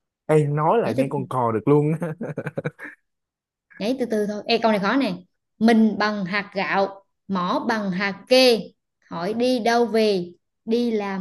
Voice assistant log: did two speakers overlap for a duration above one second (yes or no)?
no